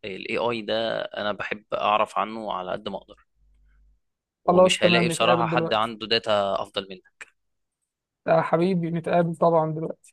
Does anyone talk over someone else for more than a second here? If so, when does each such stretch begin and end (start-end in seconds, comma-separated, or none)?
4.5-5.9